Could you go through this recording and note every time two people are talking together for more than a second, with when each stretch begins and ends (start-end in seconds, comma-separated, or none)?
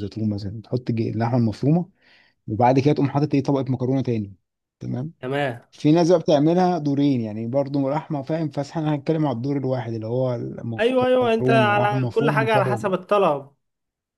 10.8-12.8